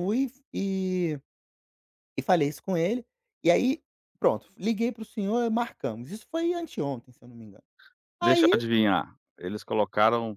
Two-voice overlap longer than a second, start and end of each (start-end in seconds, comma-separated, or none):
none